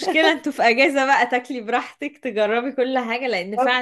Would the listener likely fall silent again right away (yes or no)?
yes